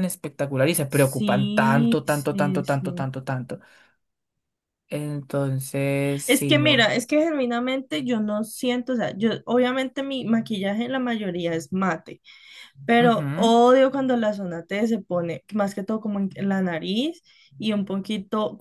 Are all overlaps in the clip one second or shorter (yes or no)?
no